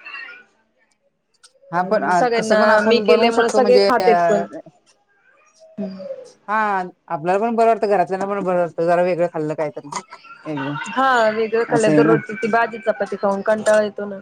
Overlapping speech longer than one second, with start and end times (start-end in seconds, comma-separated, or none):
2.4-4.4